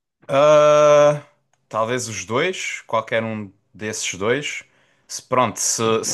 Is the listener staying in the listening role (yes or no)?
yes